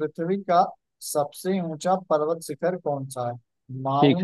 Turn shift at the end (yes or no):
no